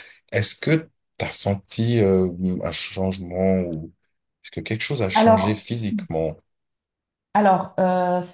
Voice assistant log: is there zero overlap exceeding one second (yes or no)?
yes